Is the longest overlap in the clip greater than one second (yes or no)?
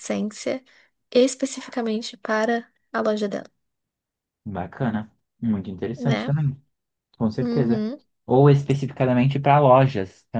no